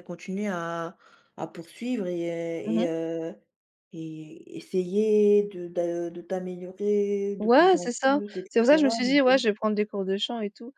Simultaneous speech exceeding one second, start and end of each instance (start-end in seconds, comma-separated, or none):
7.4-9.4